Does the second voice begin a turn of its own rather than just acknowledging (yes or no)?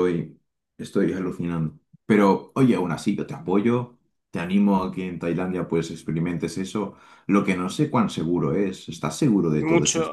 yes